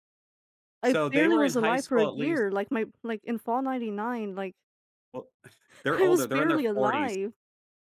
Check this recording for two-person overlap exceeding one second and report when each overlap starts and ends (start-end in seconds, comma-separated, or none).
0.8-2.5, 5.9-7.1